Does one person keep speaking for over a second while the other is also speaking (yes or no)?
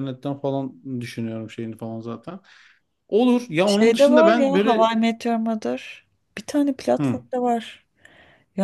yes